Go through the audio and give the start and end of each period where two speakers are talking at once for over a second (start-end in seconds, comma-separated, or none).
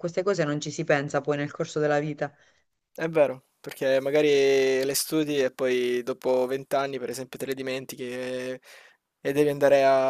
none